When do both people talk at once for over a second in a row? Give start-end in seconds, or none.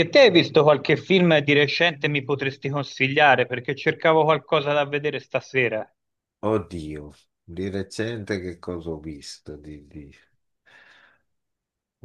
none